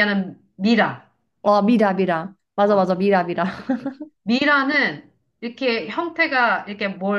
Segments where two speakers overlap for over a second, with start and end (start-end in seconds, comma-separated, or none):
none